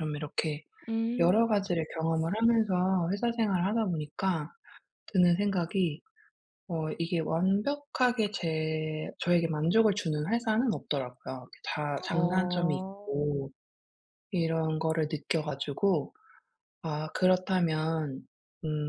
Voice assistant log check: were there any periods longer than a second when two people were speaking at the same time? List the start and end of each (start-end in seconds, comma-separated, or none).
12.1-13.3